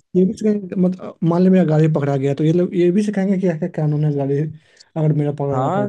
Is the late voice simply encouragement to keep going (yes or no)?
no